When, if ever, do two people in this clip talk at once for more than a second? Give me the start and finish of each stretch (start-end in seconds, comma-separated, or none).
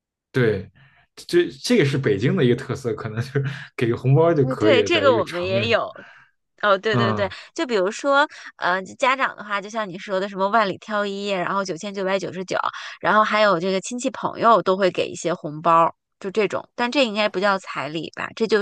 4.4-5.8